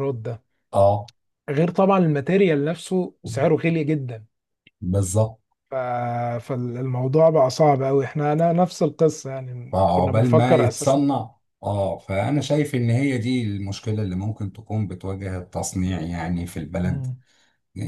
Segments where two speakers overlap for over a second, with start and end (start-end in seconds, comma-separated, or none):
9.7-11.1